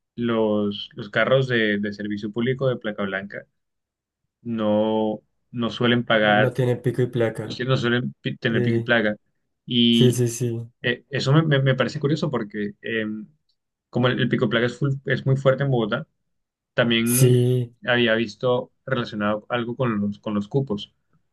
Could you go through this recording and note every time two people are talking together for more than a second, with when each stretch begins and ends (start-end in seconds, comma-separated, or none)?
none